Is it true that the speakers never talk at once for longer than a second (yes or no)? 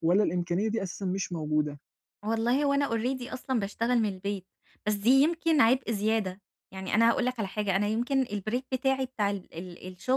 yes